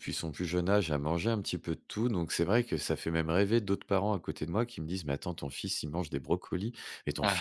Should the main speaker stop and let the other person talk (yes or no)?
no